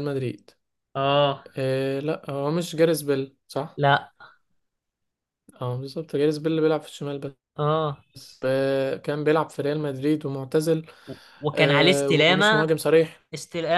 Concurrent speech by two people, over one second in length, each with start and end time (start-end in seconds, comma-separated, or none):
11.5-12.8